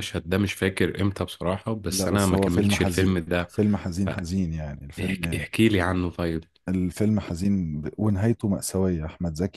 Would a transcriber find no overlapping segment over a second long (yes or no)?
no